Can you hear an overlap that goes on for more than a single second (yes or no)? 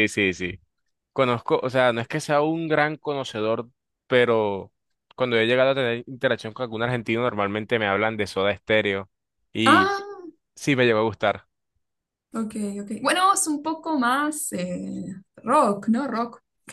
no